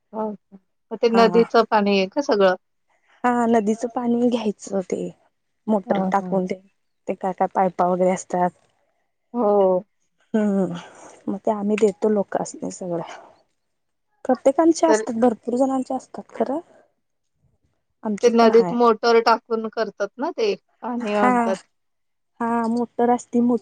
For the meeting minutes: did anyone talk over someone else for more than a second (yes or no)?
no